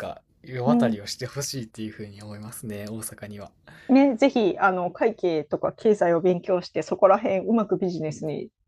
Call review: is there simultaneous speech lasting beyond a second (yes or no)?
no